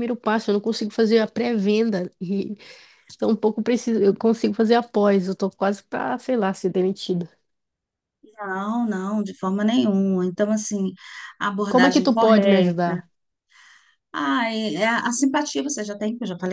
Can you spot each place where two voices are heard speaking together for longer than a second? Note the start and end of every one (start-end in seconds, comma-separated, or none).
11.7-13.0